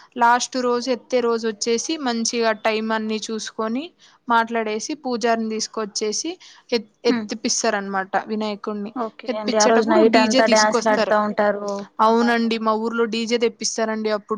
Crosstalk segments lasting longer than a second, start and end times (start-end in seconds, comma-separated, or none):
9.3-11.1